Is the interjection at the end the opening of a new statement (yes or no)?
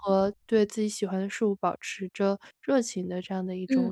yes